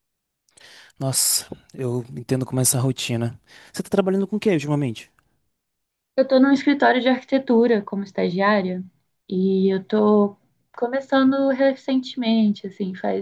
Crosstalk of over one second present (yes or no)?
no